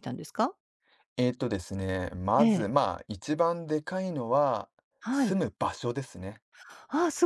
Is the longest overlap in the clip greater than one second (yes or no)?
no